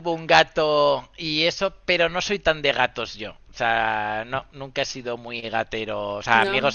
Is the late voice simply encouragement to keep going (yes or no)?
yes